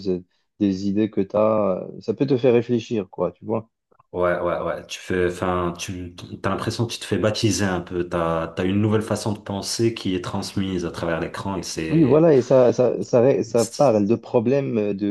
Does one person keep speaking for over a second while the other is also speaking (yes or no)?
no